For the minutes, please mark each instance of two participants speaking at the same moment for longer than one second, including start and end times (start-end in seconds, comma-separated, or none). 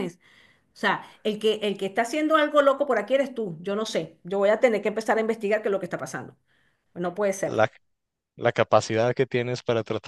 none